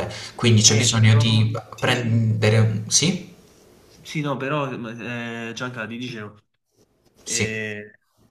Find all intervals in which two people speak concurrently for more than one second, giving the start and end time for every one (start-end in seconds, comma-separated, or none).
0.7-2.1